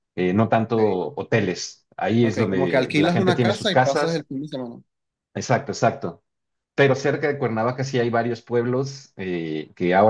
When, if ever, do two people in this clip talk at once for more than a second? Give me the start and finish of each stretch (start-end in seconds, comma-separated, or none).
2.2-4.3